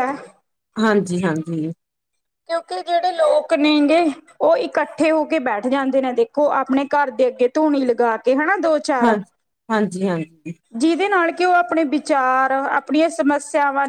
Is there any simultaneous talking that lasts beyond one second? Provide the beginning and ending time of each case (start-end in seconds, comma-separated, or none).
none